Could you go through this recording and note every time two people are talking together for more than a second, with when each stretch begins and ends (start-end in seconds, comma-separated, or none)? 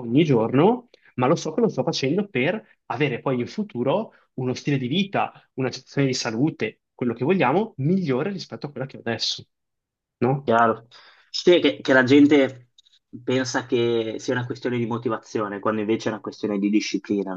none